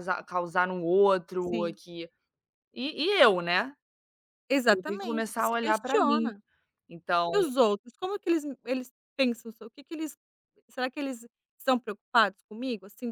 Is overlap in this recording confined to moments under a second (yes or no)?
no